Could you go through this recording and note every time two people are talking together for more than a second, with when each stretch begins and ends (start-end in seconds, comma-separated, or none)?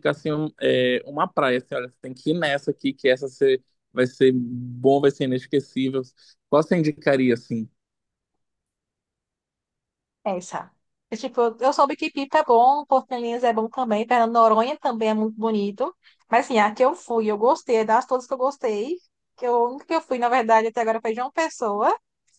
none